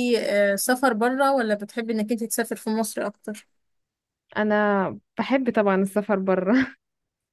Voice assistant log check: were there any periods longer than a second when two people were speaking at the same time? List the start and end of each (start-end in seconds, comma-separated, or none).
none